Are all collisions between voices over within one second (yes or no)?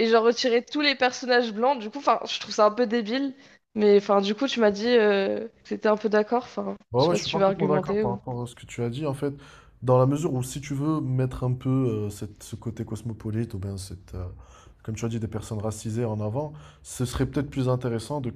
no